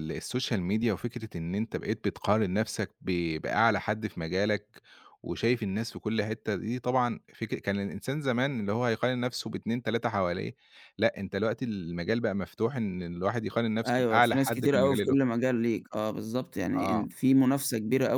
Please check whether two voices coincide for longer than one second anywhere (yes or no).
yes